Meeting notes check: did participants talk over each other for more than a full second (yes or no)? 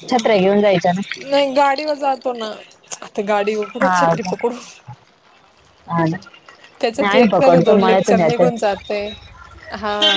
yes